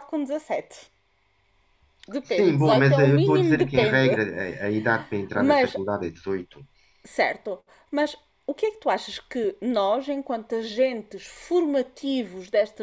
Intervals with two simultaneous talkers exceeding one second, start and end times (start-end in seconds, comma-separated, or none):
2.3-4.2